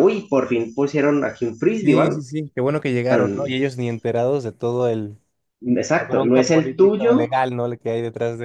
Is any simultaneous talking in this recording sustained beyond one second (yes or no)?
yes